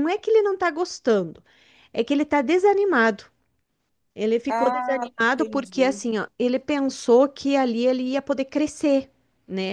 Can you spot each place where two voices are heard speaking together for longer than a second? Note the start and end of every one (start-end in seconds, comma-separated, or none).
4.5-6.0